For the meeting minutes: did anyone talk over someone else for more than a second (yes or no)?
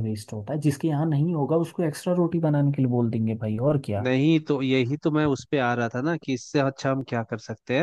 no